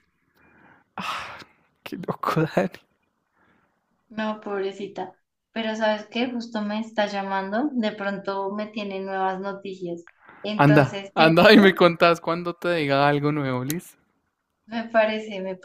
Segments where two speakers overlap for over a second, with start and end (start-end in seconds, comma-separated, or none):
10.6-11.9